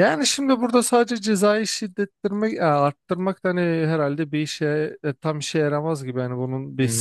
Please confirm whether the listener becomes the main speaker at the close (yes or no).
yes